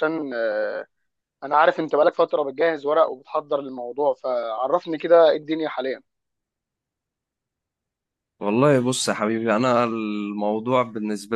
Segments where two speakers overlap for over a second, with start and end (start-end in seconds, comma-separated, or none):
none